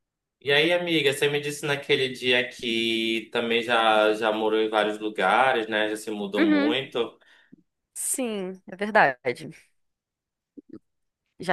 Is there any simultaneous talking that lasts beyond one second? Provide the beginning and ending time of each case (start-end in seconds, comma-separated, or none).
none